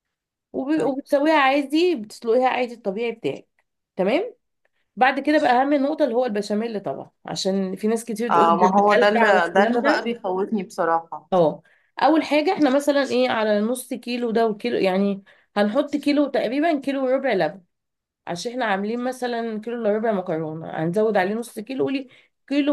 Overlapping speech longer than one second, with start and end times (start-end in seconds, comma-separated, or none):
8.3-10.1